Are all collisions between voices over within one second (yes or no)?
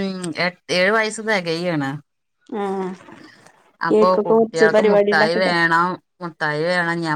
no